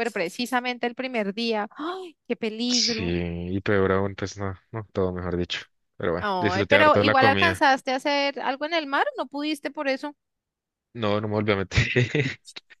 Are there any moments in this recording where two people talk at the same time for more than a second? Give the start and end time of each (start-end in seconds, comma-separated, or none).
6.2-7.6